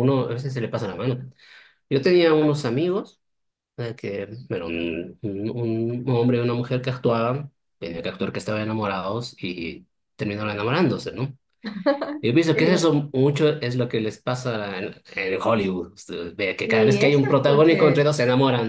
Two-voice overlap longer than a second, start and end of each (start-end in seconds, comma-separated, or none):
16.6-18.1